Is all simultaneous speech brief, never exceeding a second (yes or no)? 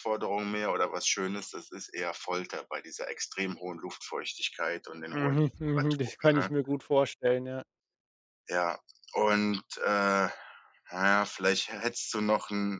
no